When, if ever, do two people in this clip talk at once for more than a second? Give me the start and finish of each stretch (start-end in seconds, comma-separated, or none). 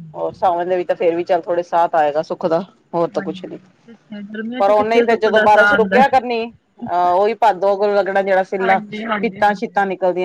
4.6-6.0